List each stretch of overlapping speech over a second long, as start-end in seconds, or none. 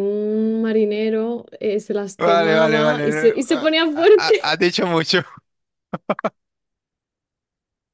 2.2-4.6